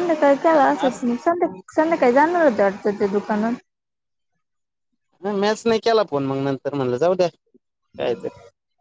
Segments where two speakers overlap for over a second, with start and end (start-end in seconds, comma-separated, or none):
none